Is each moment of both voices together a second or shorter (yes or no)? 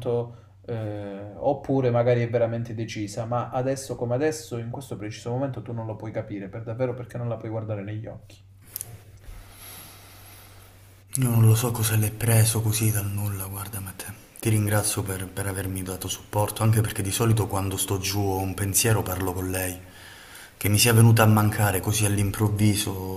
yes